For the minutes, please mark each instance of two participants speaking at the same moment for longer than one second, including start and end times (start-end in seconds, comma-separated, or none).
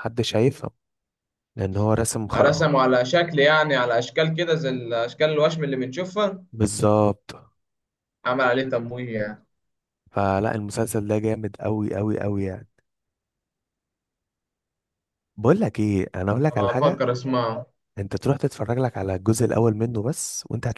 none